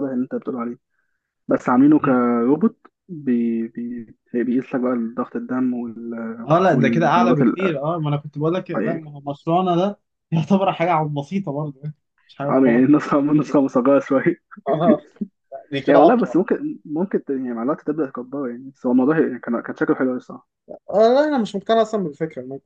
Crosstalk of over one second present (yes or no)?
yes